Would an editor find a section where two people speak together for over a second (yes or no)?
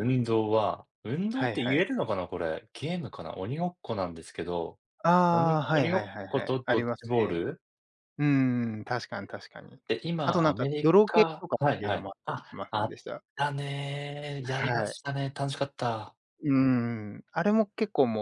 yes